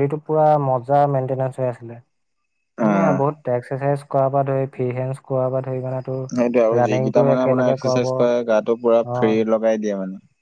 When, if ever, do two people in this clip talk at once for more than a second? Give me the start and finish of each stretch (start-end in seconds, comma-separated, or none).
6.8-9.4